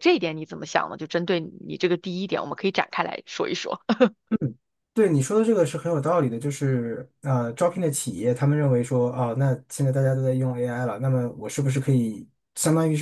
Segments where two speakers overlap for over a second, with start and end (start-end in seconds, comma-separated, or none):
none